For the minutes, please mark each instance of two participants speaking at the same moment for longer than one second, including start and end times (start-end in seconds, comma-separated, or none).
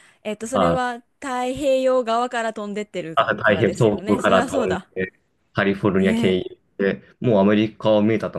3.1-4.9